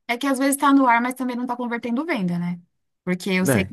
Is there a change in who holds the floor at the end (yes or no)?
no